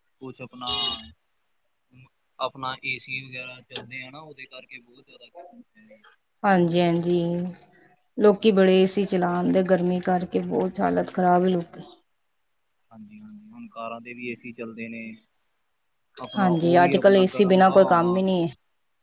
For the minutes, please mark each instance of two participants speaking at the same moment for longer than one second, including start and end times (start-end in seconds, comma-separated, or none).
16.4-18.2